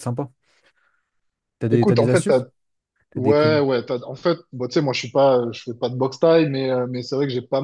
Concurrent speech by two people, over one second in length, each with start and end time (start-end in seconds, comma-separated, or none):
none